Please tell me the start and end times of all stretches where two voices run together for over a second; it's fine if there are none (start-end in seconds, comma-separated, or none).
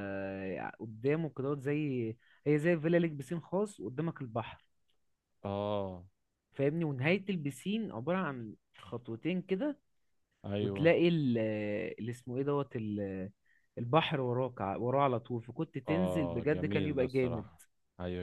15.9-17.5